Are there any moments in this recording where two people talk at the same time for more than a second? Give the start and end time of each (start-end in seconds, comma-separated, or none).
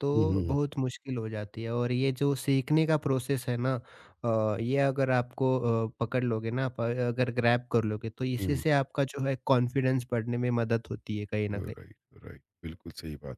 none